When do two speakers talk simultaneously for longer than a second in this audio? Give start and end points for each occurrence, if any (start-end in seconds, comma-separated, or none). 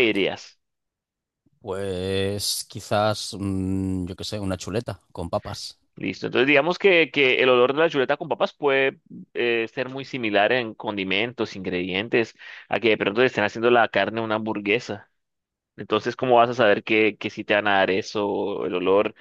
none